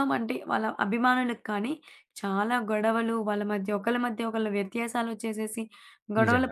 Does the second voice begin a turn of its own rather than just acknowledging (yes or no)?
no